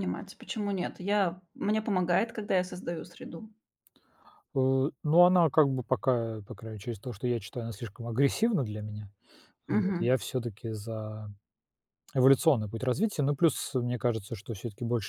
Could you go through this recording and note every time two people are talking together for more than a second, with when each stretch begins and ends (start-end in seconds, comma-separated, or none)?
none